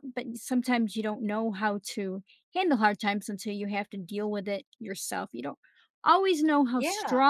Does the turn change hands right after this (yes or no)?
no